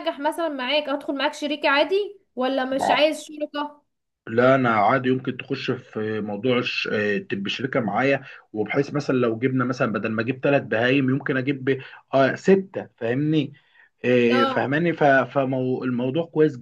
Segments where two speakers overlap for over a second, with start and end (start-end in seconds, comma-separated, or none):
none